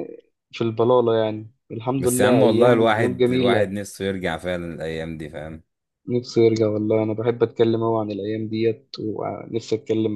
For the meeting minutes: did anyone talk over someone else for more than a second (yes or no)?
yes